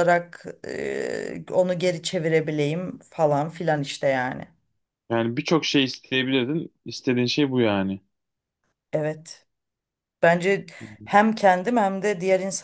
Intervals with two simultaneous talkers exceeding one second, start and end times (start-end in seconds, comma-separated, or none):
none